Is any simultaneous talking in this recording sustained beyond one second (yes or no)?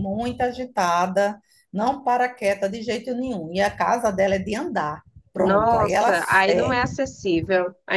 yes